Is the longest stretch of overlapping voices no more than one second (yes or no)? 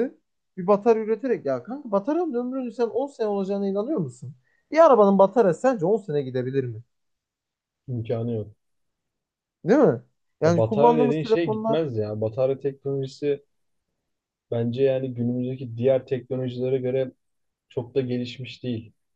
no